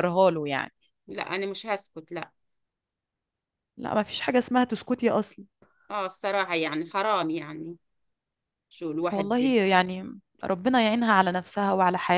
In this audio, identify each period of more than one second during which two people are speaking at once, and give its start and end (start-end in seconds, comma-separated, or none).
none